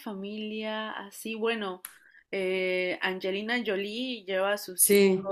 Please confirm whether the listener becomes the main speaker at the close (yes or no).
no